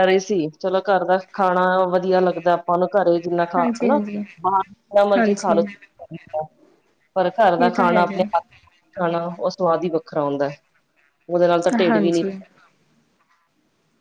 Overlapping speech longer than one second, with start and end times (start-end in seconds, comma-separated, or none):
none